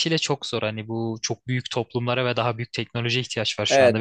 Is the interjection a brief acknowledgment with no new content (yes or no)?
no